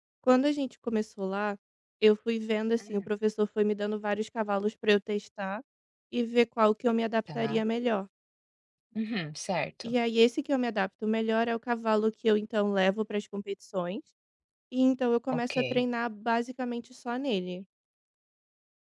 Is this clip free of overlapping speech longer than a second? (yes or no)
yes